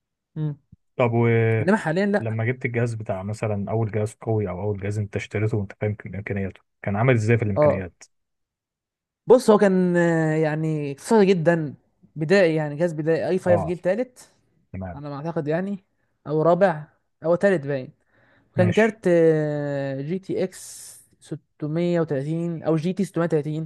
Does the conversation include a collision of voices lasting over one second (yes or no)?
no